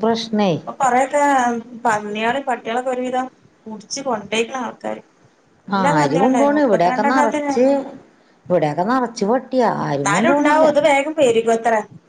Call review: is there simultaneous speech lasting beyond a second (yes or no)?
yes